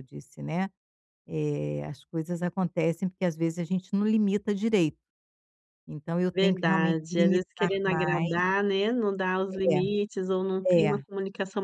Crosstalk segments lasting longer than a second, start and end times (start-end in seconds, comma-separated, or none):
6.3-8.3